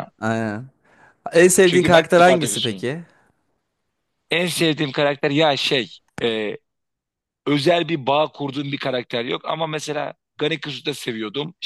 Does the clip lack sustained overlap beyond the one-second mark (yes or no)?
no